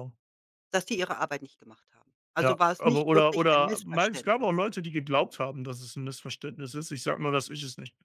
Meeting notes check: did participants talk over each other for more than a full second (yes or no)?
yes